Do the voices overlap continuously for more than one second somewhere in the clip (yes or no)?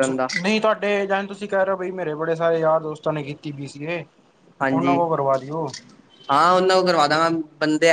no